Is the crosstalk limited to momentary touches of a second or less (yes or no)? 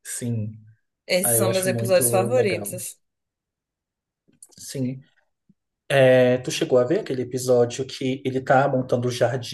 no